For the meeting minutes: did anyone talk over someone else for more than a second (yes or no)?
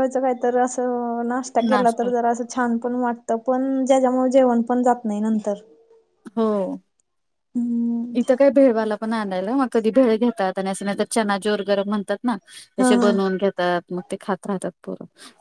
no